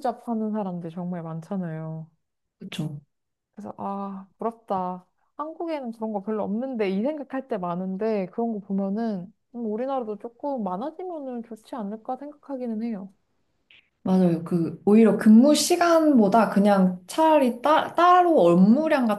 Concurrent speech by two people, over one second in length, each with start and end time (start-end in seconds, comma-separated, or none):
none